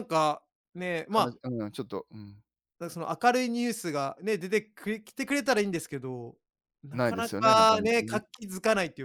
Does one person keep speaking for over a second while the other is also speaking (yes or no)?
yes